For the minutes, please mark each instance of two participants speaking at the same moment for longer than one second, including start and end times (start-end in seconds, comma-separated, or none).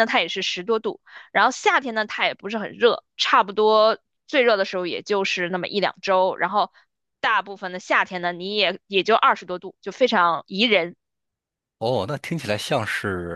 none